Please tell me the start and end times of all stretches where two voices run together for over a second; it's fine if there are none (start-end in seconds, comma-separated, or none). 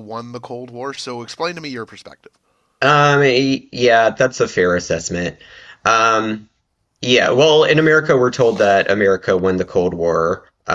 none